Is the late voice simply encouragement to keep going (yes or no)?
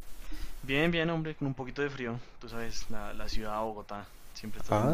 no